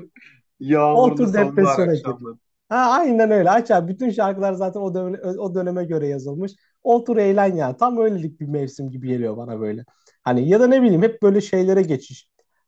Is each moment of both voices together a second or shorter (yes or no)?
no